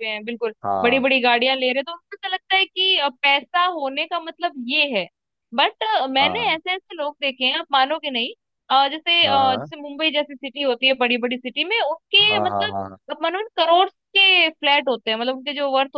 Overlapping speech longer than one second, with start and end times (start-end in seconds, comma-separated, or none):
none